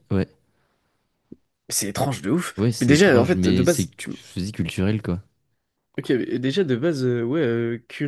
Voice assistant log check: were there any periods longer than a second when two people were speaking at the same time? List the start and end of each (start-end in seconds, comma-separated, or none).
2.6-3.9